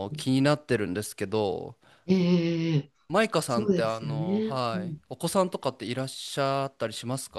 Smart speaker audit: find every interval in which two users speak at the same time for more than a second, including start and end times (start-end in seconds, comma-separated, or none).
3.5-5.0